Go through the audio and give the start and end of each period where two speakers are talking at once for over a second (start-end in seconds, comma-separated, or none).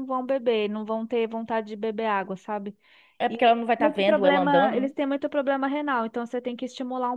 3.3-4.9